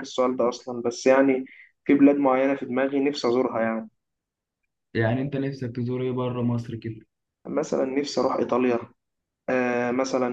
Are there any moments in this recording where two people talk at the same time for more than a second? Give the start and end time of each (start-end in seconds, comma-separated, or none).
none